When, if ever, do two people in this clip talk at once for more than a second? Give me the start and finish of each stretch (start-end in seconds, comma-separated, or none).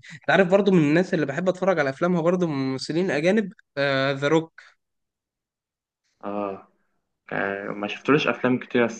none